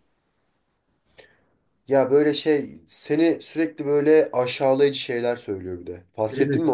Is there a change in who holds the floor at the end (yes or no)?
yes